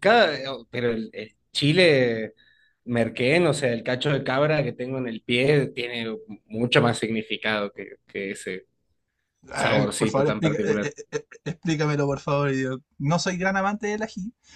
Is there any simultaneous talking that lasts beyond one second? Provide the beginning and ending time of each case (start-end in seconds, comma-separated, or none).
9.5-10.9